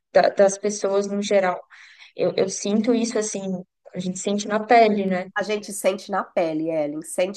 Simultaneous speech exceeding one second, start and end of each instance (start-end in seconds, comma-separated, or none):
none